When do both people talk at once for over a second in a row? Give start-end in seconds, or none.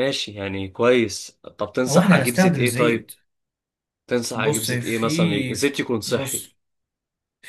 1.9-3.1, 4.3-6.5